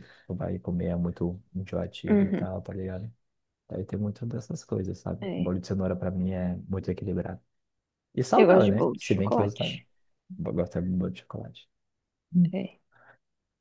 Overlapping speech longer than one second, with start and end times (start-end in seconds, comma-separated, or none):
8.4-9.8